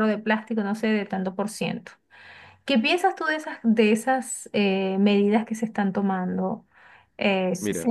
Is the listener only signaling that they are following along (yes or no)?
no